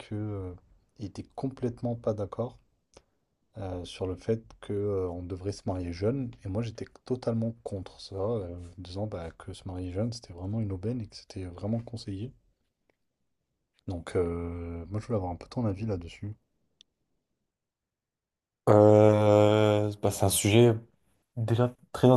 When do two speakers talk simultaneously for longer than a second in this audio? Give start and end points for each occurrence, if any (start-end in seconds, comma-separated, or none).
none